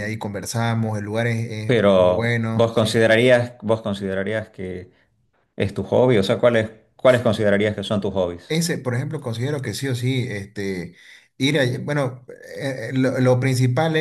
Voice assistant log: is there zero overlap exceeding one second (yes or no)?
no